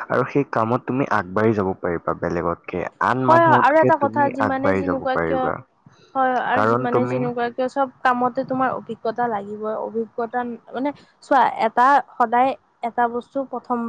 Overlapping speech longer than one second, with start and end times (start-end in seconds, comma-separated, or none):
3.3-5.4